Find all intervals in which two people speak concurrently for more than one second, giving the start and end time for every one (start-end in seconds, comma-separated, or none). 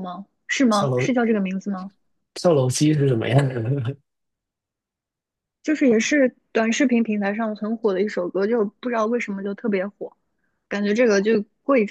none